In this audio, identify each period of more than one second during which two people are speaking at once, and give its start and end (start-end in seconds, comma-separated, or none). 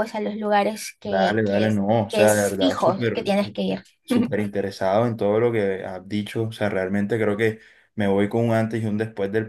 1.0-3.6